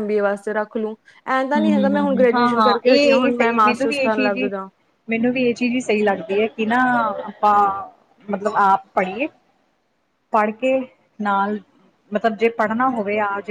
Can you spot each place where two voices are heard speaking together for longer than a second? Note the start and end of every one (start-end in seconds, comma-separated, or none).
1.6-4.5